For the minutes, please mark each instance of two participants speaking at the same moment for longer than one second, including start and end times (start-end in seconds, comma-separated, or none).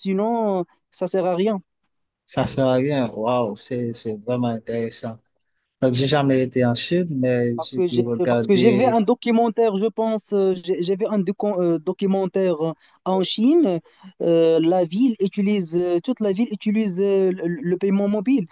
7.6-9.0